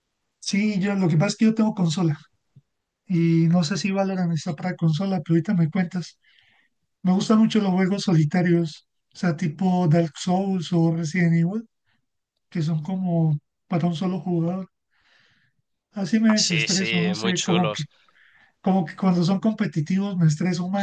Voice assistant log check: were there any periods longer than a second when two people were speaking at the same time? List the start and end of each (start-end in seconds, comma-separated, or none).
16.3-17.8